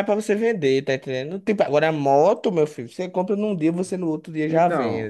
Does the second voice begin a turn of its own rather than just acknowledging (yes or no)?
yes